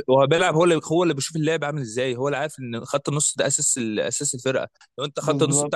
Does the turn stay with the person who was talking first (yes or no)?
yes